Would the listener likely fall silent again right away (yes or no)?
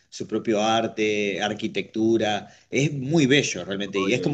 yes